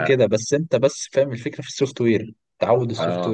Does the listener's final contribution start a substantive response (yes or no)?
yes